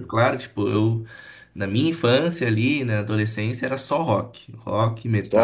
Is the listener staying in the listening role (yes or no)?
yes